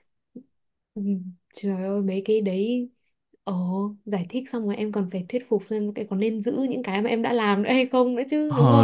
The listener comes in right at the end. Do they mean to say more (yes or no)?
yes